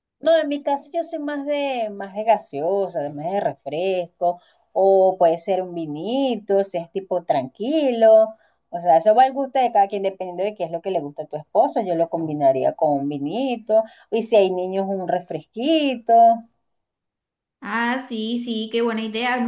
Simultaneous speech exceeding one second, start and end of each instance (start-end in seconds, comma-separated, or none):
none